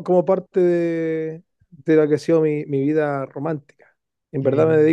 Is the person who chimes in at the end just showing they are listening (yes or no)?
yes